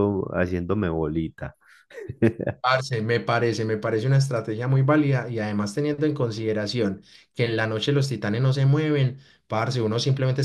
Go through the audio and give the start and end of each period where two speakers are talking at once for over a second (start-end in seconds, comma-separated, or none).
none